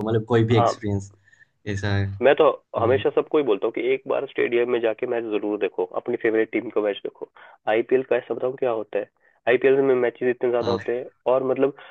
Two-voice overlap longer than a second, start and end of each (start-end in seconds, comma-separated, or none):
none